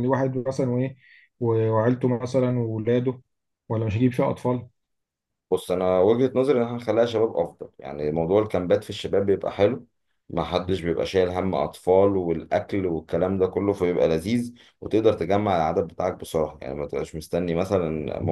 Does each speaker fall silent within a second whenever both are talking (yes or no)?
yes